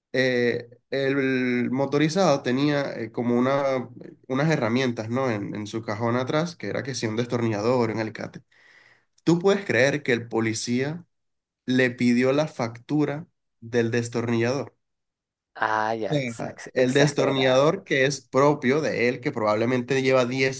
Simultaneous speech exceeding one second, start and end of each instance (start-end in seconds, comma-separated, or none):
16.4-17.6